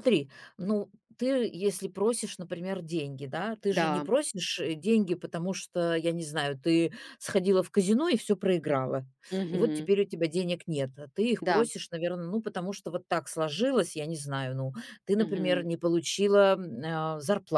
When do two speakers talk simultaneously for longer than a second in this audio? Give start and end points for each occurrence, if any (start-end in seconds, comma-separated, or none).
none